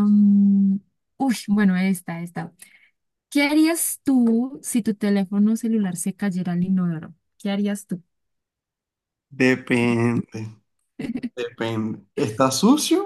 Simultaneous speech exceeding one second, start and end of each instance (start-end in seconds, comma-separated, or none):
none